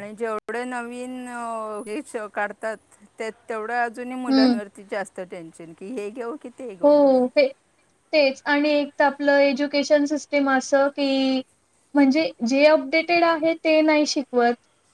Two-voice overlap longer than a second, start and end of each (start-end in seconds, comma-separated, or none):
none